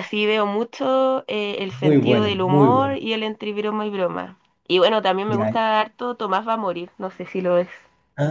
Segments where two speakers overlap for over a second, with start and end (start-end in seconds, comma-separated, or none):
1.8-3.0